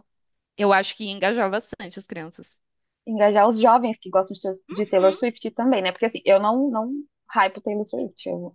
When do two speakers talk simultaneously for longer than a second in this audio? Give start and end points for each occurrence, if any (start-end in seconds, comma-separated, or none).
none